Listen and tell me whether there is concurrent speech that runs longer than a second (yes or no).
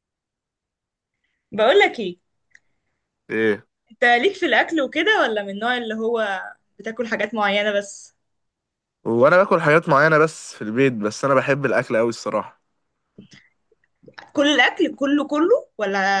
no